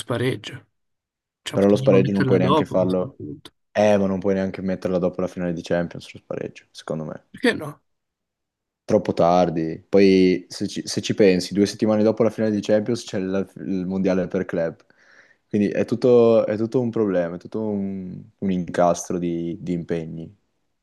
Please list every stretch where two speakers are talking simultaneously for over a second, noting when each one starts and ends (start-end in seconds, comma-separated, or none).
1.5-3.2